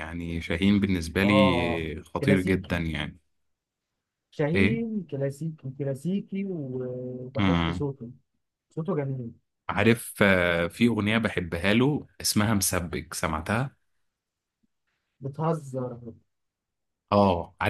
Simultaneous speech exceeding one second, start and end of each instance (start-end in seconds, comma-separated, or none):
1.2-2.8